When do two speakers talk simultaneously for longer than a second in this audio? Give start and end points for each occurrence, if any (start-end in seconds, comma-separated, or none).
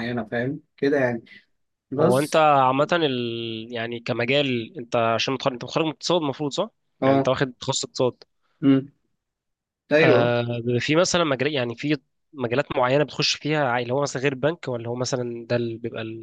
none